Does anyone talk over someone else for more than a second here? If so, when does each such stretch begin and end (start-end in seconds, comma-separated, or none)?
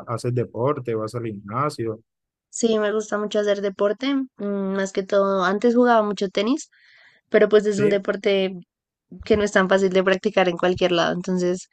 none